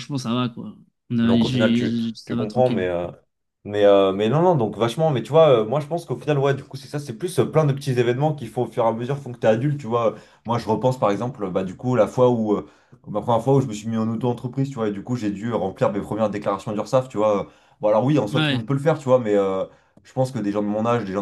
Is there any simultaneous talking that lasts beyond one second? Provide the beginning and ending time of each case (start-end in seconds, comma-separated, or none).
1.2-2.9